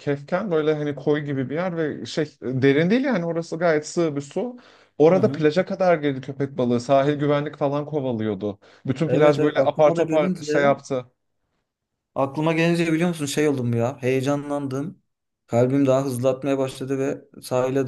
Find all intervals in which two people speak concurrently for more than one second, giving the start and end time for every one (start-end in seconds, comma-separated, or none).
9.1-10.8